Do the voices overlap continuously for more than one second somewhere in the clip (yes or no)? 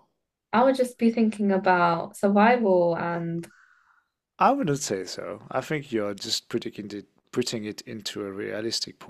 no